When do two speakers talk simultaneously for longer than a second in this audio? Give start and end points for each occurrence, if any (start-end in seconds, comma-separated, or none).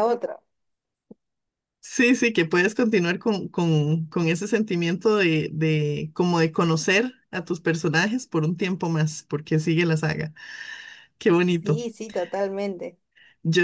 none